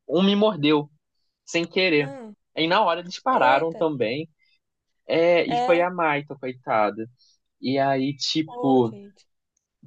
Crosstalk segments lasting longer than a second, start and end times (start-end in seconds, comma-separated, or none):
none